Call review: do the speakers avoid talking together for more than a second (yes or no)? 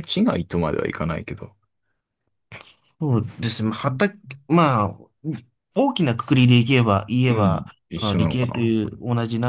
no